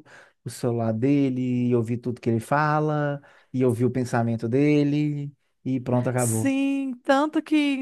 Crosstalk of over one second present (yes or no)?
no